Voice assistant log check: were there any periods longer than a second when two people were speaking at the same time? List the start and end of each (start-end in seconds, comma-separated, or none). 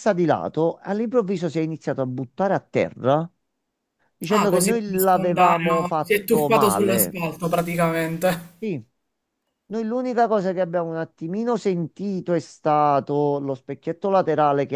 4.3-7.2